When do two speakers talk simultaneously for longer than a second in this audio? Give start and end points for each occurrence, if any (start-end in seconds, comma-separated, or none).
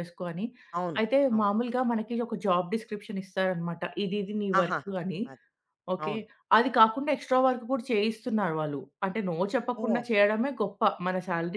none